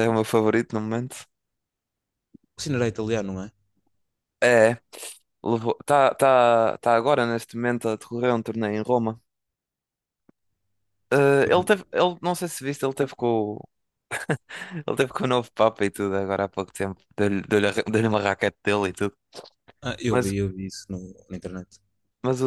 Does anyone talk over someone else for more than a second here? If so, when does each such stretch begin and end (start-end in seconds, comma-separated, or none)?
none